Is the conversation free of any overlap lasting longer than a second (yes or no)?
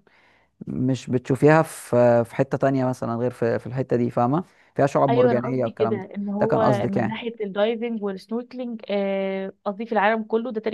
no